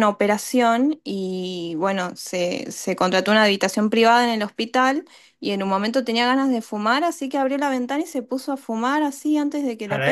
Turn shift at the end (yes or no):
yes